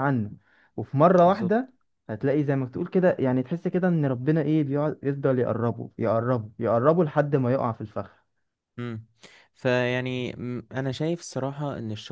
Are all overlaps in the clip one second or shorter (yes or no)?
yes